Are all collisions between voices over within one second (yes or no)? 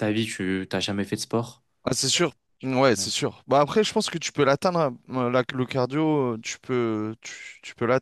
yes